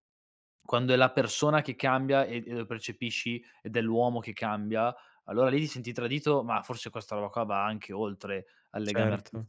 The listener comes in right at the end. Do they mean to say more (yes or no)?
yes